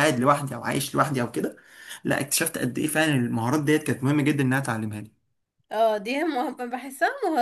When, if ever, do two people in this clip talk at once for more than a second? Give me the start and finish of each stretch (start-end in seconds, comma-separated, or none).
none